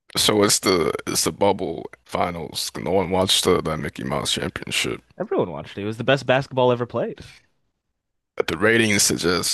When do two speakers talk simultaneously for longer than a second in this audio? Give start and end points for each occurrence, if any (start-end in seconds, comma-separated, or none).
none